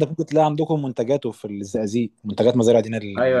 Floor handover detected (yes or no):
yes